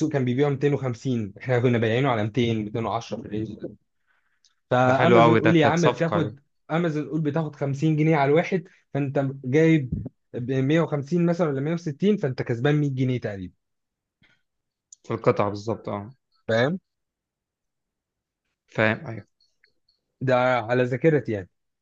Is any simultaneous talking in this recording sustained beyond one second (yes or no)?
yes